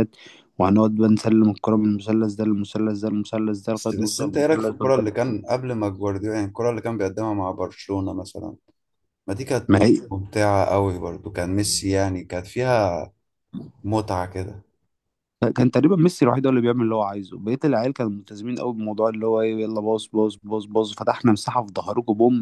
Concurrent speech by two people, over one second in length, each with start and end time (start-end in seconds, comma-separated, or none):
3.7-5.4